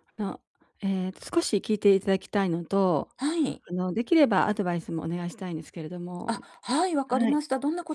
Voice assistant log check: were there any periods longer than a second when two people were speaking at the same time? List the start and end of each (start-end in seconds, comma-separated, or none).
none